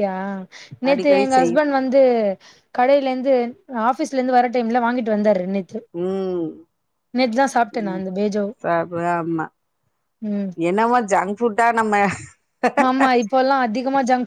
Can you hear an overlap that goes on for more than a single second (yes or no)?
no